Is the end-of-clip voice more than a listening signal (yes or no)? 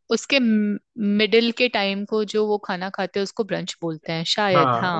yes